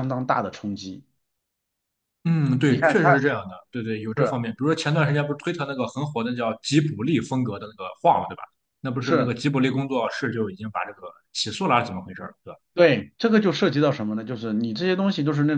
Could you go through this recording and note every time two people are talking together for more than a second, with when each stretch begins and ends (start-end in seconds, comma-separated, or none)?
none